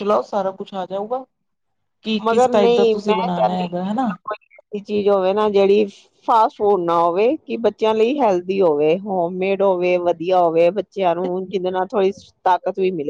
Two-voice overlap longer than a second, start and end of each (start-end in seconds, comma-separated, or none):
2.2-4.1